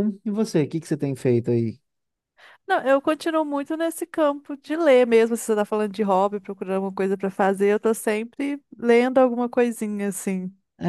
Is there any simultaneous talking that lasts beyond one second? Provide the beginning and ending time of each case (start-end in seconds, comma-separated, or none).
none